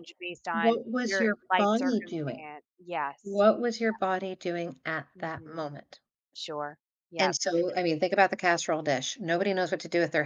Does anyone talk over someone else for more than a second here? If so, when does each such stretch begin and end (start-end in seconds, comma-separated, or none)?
0.5-2.5